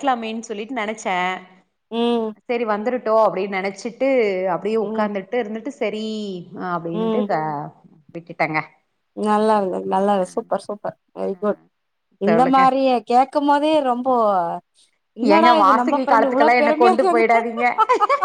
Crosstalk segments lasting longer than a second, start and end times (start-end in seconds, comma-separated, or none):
15.3-17.2